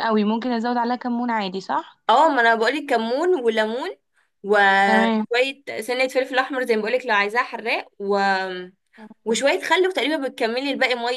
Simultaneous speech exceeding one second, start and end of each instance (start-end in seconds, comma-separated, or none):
none